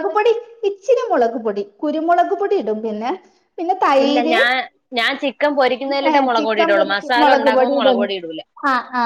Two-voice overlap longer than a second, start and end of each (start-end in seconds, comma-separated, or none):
6.1-8.0